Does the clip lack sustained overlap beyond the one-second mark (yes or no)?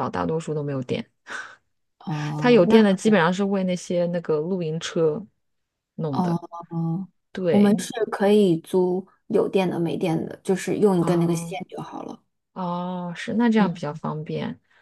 yes